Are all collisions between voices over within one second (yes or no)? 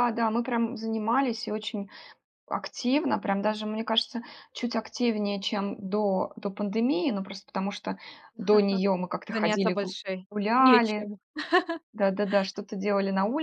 no